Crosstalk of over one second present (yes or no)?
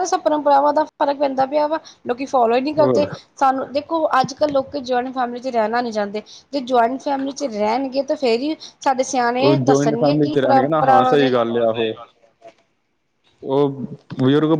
yes